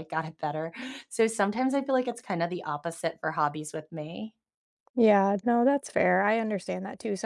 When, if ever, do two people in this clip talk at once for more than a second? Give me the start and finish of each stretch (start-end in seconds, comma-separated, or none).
none